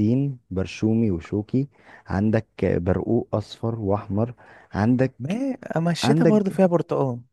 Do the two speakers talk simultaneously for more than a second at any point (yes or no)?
no